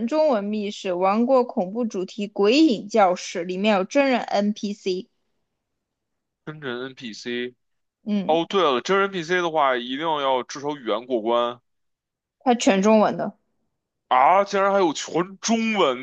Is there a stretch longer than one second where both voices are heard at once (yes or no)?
no